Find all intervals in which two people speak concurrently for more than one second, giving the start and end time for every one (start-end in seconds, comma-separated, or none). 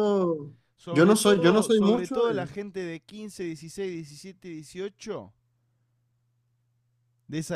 0.9-2.5